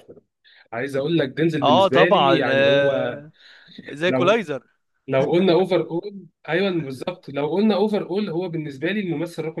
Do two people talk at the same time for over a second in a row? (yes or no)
yes